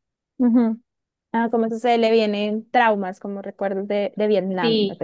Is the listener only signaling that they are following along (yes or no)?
no